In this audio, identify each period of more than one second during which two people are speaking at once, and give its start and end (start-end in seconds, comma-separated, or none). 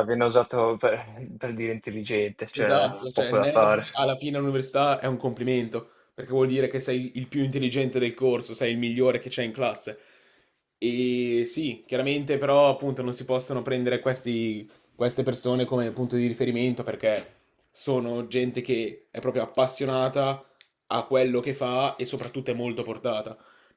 2.5-3.9